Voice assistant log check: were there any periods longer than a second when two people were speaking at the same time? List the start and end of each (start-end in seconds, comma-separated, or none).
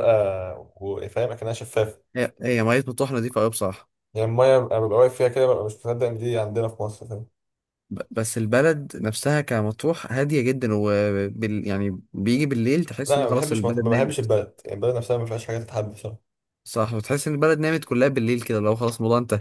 13.1-14.3